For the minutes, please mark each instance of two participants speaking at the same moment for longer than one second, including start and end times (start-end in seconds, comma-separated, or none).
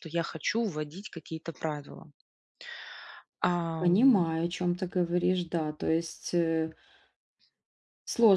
none